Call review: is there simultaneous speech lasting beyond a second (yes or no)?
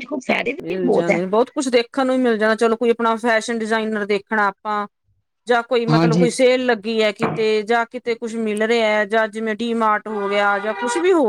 no